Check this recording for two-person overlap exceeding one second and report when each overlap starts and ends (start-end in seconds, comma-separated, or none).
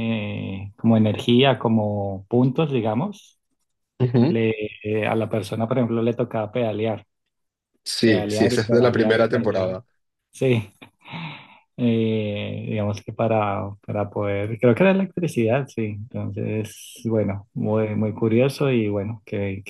8.0-9.8